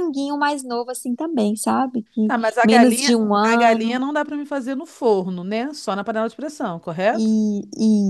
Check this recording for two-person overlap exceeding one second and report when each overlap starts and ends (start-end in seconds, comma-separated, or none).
2.2-4.0